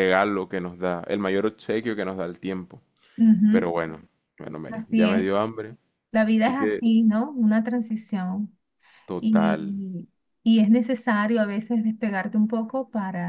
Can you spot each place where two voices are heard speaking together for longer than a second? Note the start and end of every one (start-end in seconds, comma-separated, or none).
none